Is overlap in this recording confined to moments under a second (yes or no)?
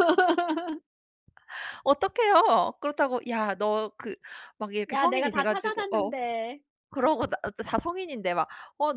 no